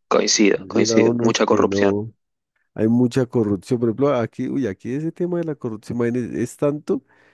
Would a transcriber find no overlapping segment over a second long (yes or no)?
no